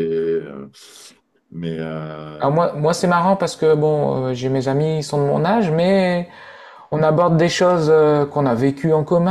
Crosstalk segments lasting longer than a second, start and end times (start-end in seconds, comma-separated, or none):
none